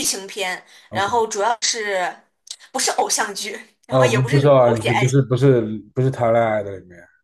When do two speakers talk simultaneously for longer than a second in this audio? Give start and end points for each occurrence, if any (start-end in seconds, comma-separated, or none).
3.9-5.2